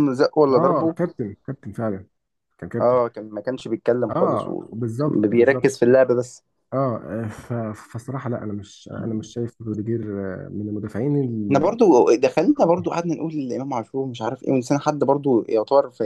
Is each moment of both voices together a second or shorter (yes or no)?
no